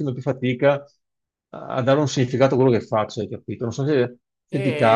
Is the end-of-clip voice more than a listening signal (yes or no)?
yes